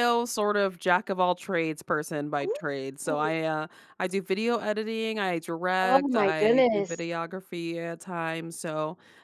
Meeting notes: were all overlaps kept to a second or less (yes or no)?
no